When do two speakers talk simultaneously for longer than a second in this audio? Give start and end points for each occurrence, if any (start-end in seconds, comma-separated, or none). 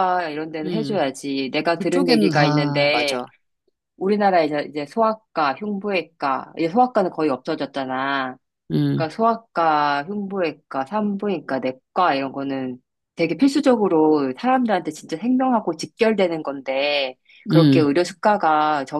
1.8-3.2